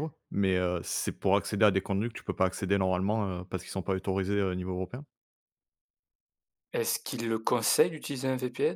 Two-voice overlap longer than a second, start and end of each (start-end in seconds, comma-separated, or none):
none